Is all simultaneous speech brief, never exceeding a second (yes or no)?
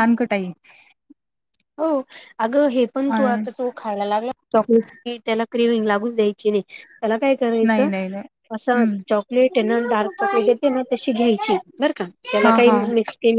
yes